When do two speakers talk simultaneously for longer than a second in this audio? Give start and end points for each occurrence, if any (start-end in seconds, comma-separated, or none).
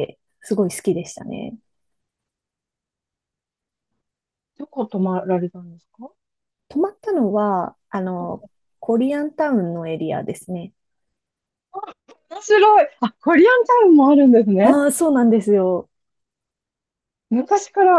none